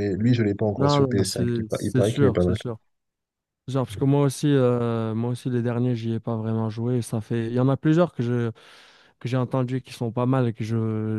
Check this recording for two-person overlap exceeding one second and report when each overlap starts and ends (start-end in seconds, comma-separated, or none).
0.8-2.6